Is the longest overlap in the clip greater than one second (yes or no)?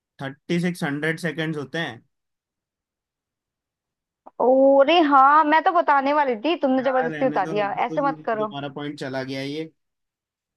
yes